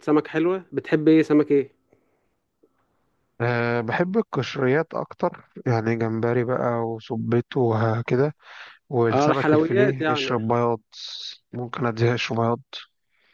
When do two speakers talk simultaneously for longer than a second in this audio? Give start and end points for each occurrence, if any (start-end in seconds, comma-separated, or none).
9.1-10.3